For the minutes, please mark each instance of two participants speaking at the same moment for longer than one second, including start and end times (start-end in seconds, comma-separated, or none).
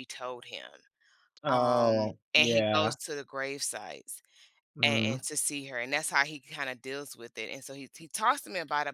1.5-3.0